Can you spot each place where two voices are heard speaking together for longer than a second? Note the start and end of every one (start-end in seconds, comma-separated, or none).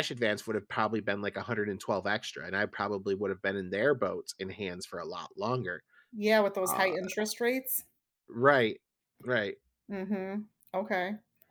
none